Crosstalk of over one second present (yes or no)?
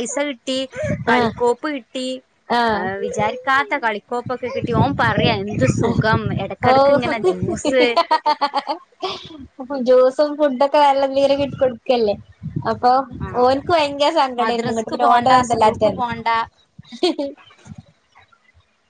yes